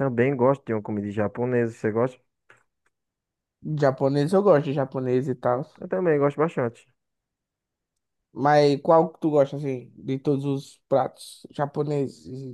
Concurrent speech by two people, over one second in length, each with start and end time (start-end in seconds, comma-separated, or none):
none